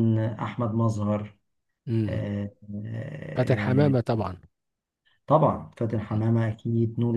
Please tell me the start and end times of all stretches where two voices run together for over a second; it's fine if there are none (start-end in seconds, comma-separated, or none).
none